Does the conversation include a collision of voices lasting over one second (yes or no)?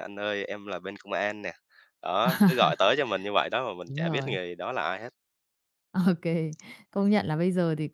no